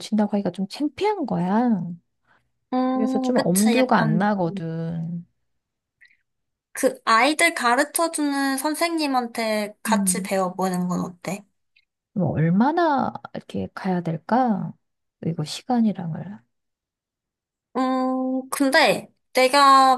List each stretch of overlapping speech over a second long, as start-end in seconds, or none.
2.9-4.3